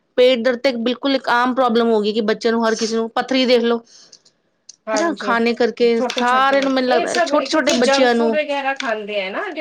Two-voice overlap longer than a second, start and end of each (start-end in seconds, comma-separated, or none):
6.6-8.3